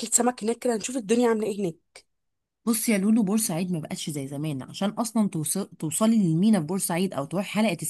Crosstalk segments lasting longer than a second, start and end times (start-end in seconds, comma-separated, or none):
none